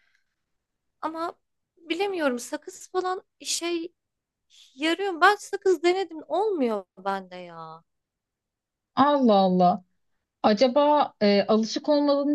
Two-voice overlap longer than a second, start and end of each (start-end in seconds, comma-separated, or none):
none